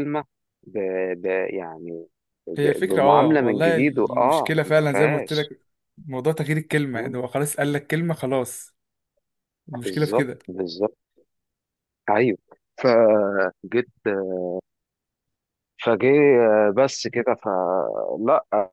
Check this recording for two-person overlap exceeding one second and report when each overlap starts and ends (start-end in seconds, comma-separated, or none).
2.6-5.5